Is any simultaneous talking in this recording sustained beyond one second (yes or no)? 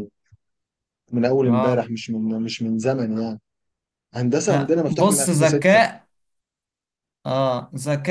yes